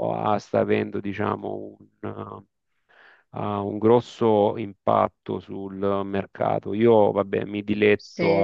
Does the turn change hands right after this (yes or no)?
no